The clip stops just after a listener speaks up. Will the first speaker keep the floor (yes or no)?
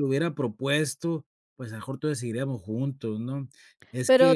no